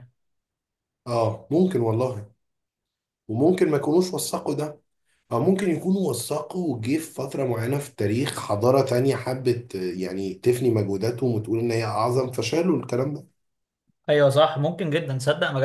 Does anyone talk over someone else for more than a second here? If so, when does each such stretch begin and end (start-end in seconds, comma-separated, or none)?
none